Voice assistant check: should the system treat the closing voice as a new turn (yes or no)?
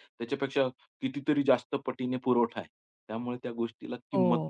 yes